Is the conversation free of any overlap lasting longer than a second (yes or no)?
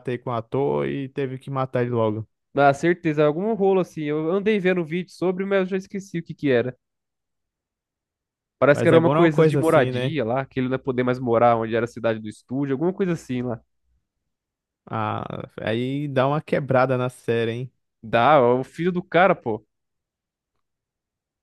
no